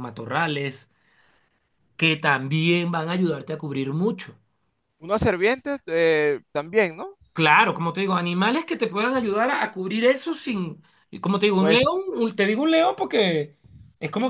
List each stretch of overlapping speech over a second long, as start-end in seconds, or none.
none